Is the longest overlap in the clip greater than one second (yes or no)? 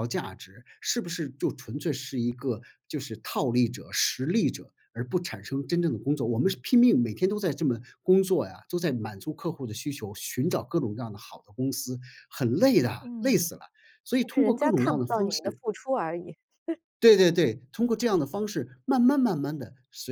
yes